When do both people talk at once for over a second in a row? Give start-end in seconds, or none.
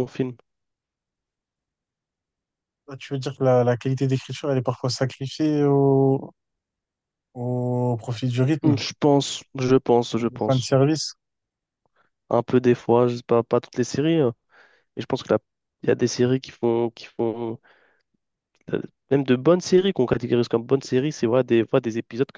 none